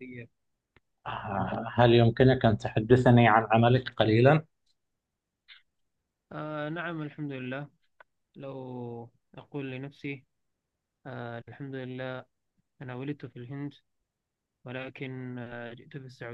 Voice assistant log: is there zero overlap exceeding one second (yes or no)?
yes